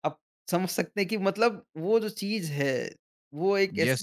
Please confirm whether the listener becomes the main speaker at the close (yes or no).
yes